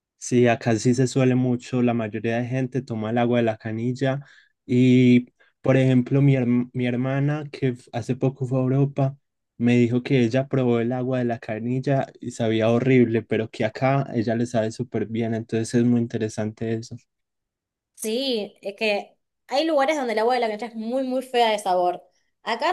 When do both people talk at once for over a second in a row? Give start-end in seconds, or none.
none